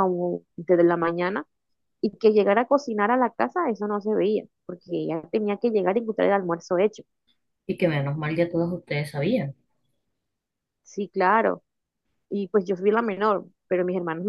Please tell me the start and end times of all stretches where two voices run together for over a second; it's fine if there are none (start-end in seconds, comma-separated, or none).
none